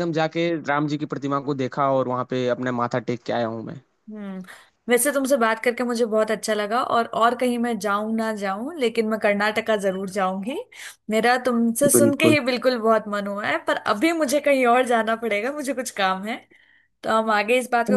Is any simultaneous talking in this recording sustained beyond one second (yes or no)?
no